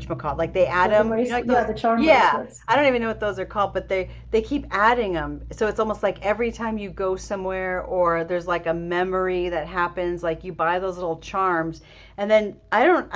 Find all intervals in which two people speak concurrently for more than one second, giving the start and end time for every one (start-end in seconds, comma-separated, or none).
0.8-2.7